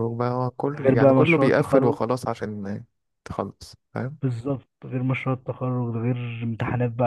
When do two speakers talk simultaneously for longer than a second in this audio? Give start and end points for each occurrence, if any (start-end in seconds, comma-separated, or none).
0.8-2.0